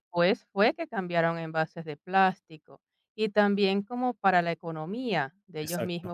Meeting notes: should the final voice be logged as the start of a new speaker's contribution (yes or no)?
no